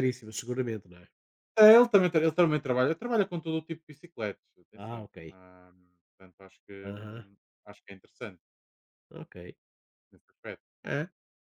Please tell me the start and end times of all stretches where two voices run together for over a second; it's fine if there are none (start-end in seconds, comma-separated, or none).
none